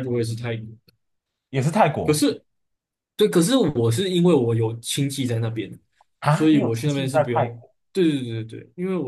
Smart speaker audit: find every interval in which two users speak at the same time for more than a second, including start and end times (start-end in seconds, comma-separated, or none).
6.3-7.7